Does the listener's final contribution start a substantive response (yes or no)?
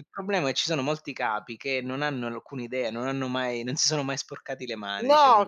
yes